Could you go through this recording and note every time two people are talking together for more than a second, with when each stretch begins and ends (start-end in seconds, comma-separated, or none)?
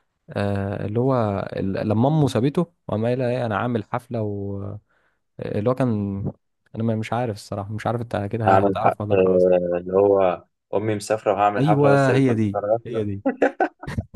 11.6-13.0